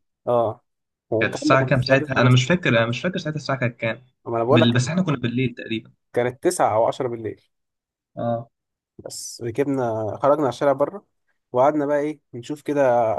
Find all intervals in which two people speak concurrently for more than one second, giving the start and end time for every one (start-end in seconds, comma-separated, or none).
1.2-2.6